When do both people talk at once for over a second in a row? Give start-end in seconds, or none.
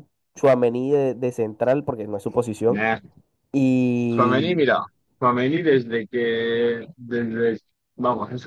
none